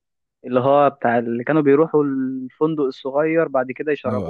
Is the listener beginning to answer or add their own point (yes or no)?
no